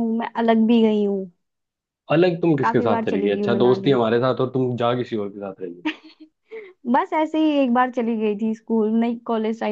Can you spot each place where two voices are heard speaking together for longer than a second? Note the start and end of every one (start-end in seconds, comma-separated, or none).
2.6-4.0